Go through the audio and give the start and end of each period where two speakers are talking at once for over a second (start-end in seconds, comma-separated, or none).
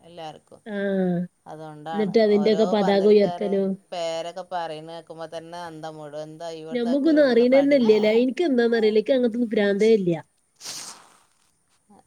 1.9-3.5